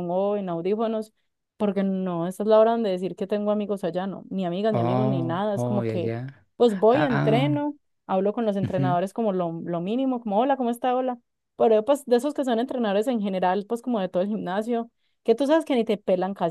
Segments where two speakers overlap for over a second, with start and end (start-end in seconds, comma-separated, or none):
4.7-6.1